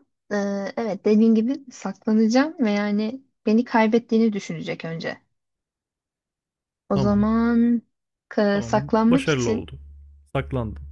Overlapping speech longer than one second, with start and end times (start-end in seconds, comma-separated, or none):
8.5-9.8